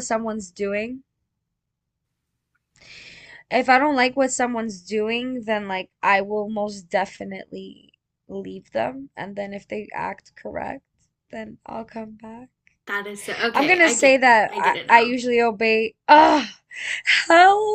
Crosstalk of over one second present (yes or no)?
yes